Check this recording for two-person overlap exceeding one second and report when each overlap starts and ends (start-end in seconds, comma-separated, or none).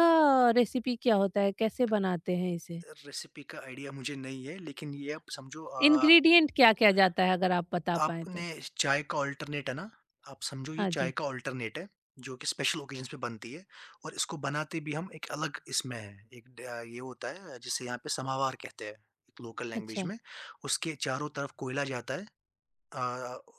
none